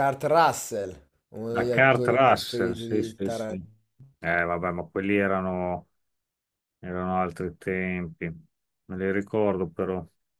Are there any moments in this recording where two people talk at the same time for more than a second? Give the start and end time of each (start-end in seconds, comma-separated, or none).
1.5-3.7